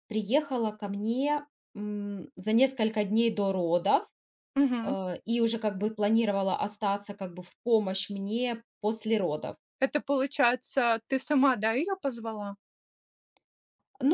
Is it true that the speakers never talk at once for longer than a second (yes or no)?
yes